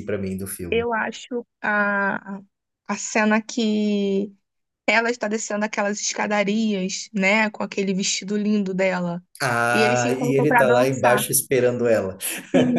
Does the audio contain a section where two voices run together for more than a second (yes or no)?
yes